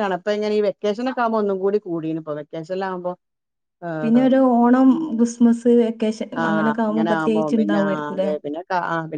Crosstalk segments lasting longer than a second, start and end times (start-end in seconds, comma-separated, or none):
6.4-8.3